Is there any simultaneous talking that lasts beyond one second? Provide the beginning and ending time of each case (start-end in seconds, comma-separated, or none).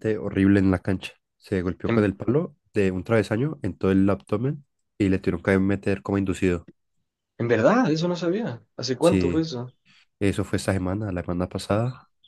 none